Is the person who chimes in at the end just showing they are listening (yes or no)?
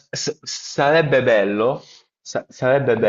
yes